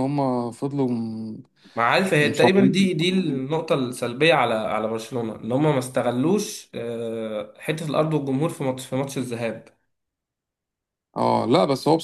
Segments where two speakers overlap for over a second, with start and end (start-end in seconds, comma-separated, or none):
2.2-3.5